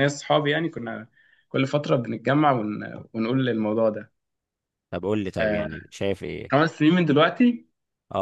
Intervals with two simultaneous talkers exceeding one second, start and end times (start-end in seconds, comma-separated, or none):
none